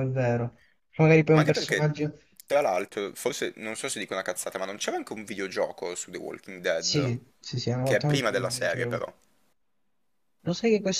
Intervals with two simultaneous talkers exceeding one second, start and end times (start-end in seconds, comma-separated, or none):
7.8-9.1